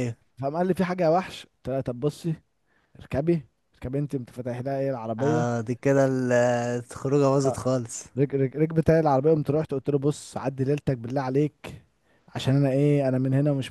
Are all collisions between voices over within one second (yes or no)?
yes